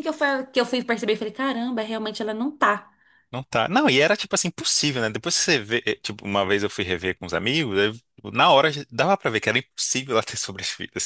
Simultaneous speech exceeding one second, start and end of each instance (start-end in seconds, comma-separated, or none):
none